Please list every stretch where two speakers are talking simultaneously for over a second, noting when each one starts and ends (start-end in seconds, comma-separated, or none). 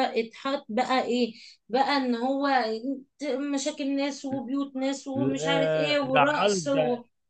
5.2-6.7